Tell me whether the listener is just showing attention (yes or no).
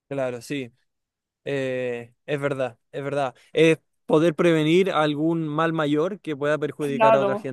no